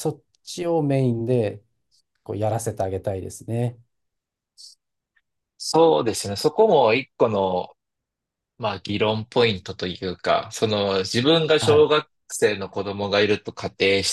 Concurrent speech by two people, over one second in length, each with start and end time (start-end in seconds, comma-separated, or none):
none